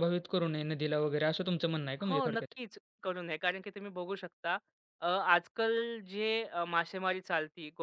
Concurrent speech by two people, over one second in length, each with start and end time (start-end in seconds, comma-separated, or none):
none